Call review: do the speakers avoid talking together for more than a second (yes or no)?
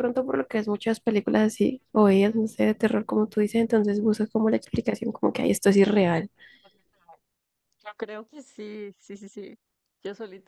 yes